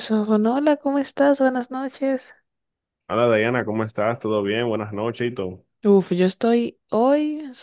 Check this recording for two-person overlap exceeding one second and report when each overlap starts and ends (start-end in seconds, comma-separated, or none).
none